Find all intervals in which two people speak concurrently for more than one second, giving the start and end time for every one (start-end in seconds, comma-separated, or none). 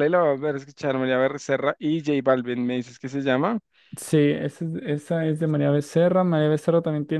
none